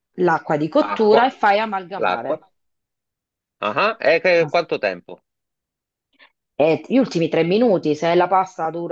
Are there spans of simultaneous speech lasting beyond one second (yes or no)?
no